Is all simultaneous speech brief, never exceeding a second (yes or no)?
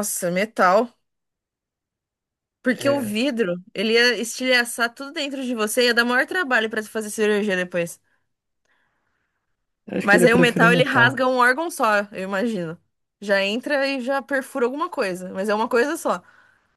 no